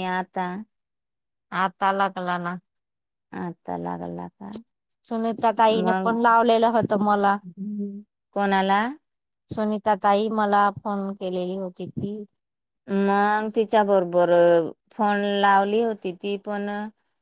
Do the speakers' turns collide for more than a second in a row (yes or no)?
no